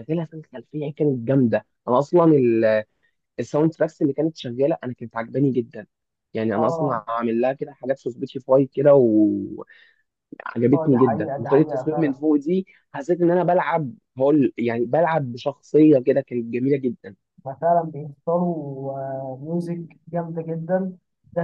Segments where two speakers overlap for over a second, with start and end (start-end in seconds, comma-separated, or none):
10.9-12.1